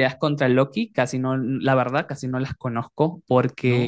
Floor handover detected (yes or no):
no